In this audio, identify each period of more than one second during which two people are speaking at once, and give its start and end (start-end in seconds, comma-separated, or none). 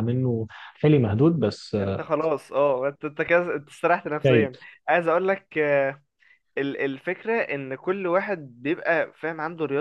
none